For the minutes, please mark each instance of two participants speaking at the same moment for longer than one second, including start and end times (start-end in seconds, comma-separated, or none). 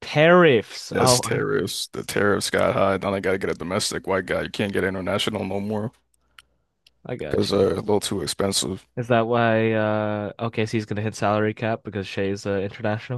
none